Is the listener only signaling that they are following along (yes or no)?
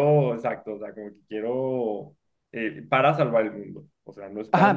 no